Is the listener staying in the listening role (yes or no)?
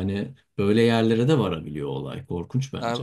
no